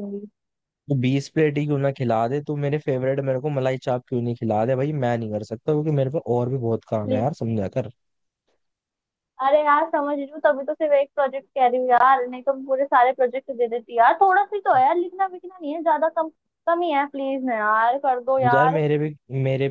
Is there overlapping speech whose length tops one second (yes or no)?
no